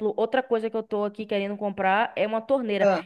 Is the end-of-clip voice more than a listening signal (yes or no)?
no